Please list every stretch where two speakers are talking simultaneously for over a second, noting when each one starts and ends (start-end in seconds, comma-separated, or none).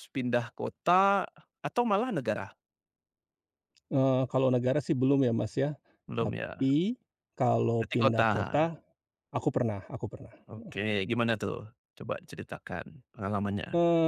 none